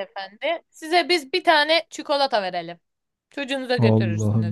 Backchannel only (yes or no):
no